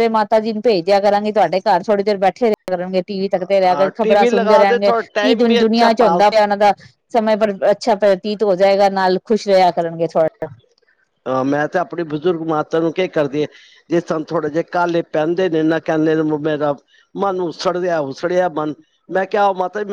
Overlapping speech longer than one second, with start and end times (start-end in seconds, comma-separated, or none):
3.7-6.4